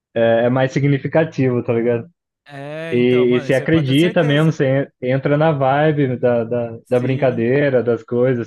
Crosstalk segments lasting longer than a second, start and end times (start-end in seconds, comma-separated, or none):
2.9-4.6